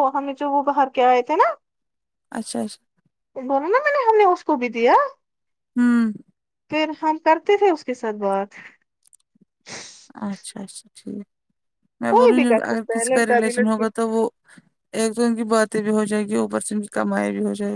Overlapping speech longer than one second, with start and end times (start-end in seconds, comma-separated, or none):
12.2-13.8